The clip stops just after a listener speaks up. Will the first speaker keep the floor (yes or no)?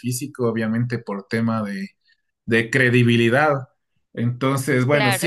yes